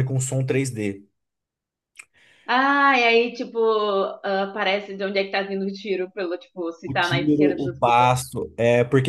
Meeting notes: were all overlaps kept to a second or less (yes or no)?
no